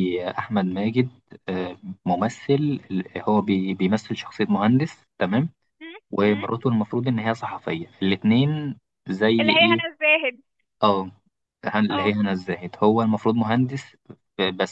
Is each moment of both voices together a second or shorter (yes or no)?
yes